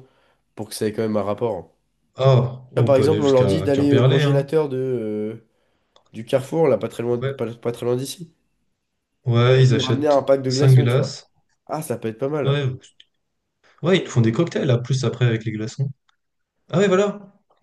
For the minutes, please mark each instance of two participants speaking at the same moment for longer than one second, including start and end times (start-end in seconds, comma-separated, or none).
2.8-4.5, 9.5-11.2